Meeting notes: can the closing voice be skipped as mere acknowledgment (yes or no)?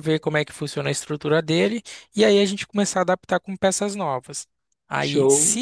yes